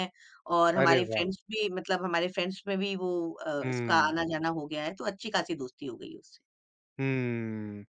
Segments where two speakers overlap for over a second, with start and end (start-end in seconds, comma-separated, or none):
none